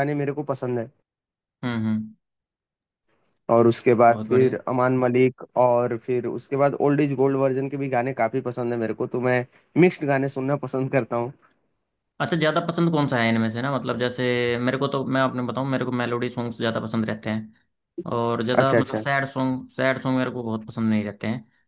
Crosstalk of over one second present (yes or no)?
no